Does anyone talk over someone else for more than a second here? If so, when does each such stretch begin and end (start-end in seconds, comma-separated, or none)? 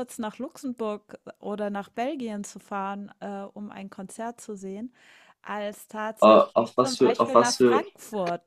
6.2-7.8